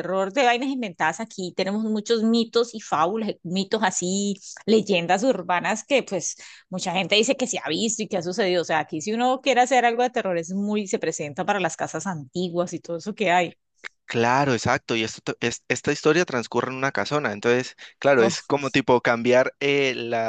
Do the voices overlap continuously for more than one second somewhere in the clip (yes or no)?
no